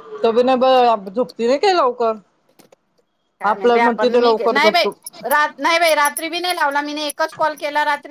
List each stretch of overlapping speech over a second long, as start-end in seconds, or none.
3.5-4.9